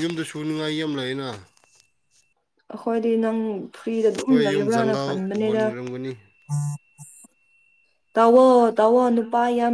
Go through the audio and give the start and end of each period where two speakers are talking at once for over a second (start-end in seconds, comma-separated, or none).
4.1-5.6